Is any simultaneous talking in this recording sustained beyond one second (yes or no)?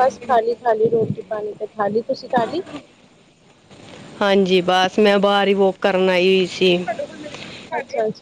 no